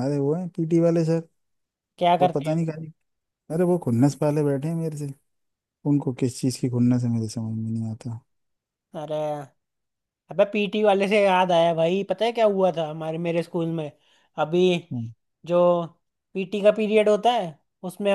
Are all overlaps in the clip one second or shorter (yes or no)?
yes